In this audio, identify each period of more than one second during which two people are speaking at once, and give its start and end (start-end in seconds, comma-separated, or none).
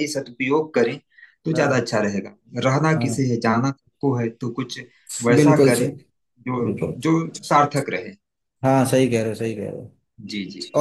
none